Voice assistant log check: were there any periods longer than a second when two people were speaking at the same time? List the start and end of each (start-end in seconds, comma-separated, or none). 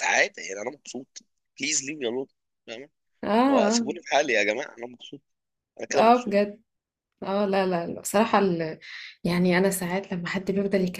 none